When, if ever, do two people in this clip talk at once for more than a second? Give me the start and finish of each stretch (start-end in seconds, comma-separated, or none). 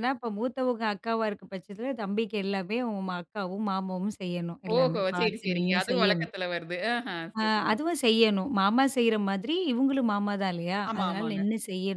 4.8-6.3